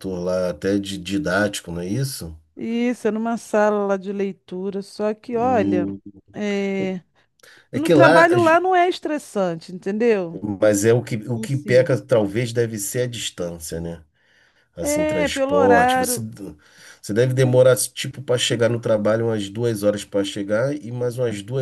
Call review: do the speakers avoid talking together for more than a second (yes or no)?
no